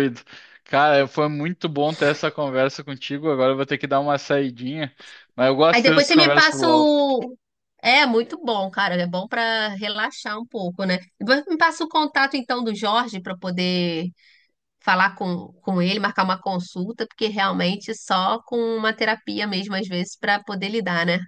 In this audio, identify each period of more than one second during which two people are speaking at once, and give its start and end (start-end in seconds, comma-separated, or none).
5.7-6.9